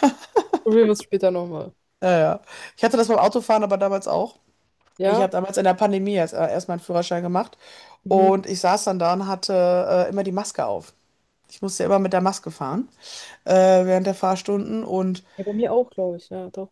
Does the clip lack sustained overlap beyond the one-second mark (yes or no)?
yes